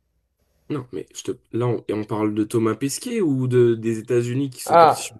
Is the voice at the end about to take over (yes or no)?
yes